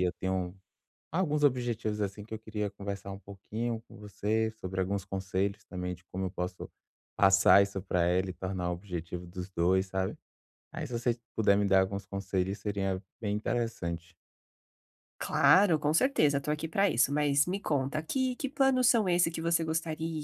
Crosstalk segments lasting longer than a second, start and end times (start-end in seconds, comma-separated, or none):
none